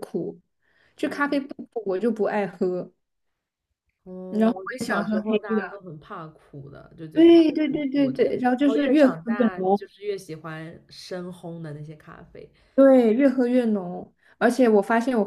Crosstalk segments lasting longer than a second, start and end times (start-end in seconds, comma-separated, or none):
4.3-5.8, 7.1-9.8